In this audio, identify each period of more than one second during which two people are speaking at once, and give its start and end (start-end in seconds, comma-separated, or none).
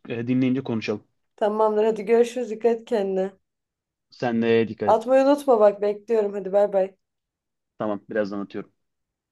none